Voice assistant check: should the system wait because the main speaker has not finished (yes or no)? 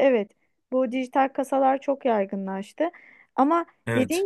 yes